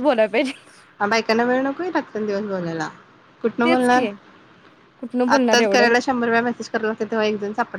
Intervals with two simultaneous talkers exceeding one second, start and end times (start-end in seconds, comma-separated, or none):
none